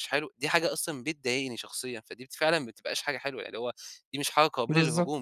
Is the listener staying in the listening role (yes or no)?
no